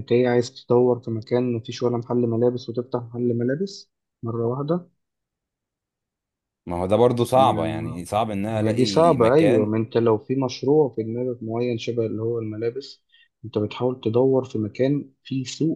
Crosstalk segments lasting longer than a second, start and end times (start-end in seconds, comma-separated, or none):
8.5-9.7